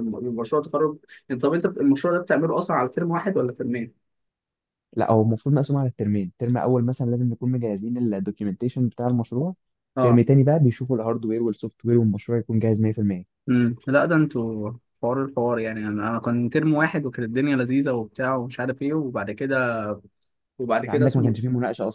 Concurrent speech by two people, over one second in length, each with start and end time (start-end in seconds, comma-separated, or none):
none